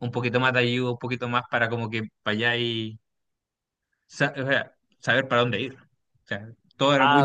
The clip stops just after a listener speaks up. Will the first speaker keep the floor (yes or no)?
yes